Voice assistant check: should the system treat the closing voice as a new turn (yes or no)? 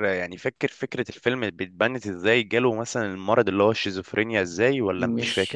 yes